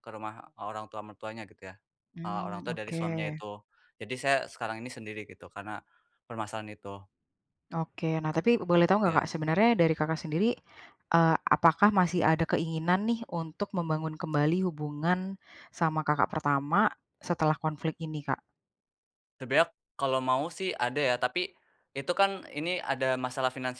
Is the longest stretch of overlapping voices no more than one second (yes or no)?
no